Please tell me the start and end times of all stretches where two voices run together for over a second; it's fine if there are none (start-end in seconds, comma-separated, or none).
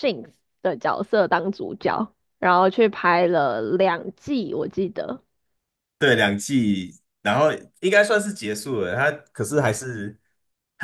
none